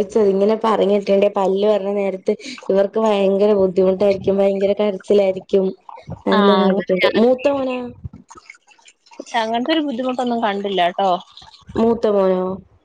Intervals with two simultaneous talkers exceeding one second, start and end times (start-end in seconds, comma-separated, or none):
none